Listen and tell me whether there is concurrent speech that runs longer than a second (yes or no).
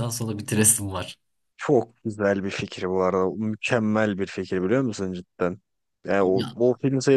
no